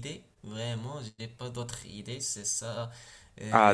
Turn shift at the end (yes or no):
yes